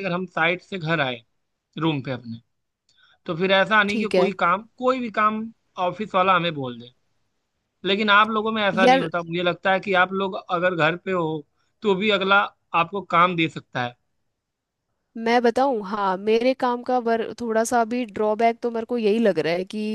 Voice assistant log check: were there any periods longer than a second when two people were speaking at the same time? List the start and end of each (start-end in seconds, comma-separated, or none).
none